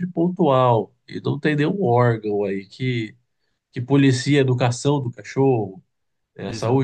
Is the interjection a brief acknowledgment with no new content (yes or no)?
yes